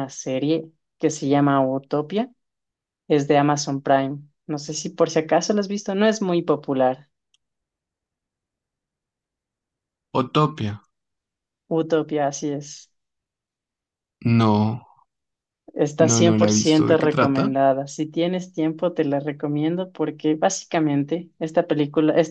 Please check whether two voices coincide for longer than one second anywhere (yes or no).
yes